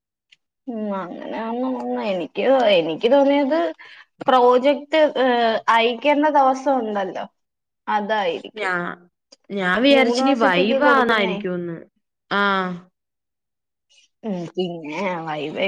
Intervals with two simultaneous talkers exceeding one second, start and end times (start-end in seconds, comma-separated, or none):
10.0-11.4